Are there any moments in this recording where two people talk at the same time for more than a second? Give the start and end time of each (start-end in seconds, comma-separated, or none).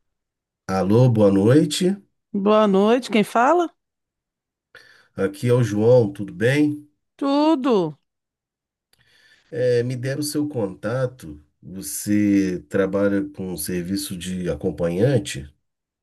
none